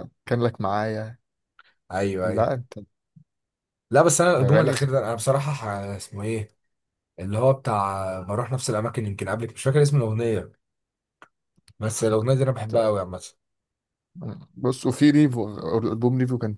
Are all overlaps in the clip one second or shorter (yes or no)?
yes